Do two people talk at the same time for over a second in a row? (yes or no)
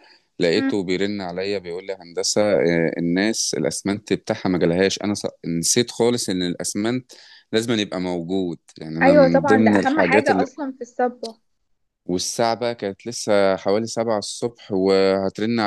yes